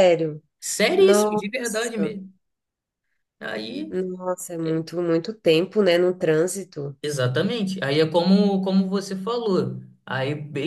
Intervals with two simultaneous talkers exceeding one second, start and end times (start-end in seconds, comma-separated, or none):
1.0-2.2